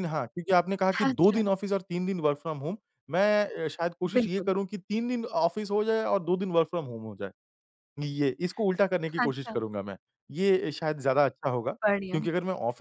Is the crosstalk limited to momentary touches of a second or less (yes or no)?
yes